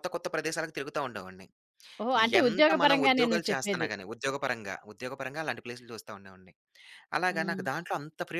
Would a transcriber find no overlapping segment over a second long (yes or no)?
no